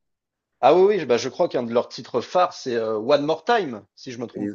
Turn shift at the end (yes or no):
yes